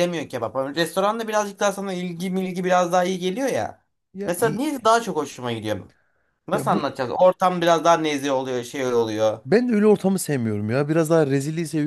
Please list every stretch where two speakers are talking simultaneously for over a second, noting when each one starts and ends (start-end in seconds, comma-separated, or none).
none